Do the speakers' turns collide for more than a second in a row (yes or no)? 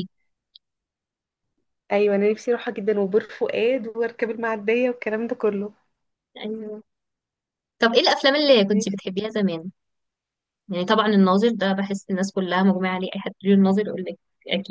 no